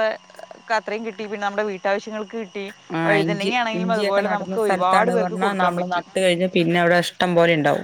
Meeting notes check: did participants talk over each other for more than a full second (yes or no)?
yes